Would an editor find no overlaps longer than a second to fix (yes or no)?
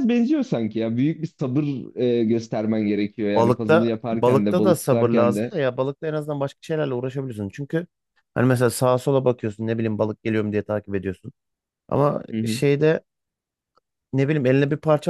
no